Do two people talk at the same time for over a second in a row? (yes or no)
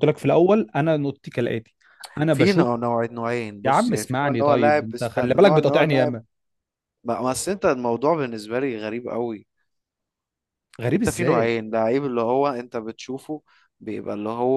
yes